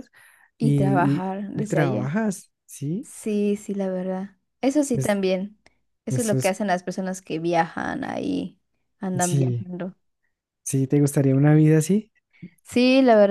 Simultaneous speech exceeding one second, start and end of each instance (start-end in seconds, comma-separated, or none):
0.6-2.1